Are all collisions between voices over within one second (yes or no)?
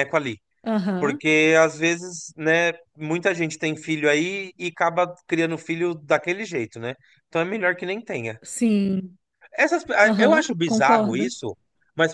no